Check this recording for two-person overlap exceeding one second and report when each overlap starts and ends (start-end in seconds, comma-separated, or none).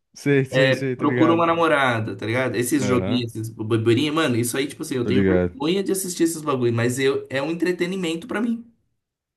none